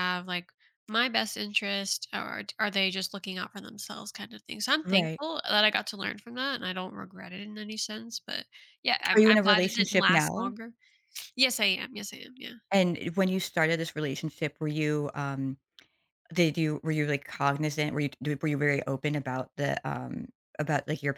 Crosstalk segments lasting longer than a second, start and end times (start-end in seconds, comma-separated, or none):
9.1-10.6